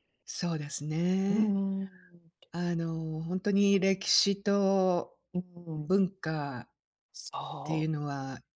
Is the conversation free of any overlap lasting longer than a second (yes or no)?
yes